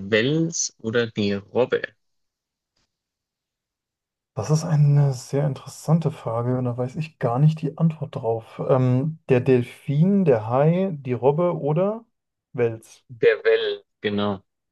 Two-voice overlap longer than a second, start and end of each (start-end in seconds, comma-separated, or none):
none